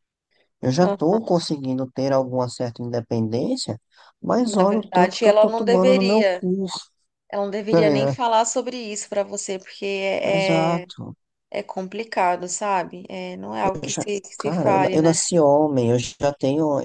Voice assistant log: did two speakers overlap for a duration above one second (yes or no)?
yes